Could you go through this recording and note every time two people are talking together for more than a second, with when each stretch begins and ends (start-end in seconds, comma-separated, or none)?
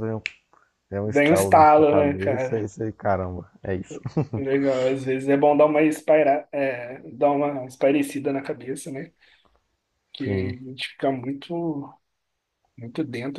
1.1-2.7